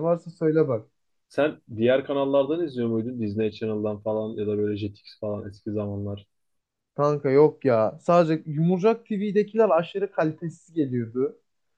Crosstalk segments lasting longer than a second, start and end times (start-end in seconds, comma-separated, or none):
none